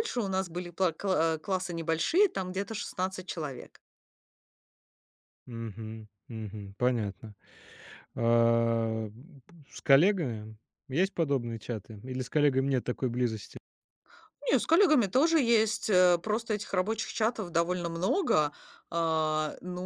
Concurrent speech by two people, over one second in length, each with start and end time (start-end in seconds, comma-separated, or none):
none